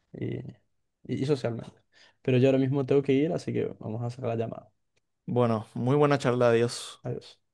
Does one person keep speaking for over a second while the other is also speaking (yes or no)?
no